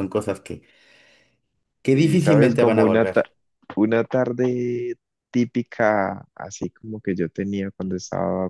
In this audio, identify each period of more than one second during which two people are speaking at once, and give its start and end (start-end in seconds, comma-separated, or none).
1.9-3.2